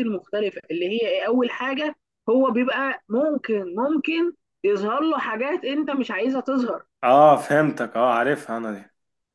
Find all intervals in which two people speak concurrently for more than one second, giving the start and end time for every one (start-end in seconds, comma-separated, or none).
none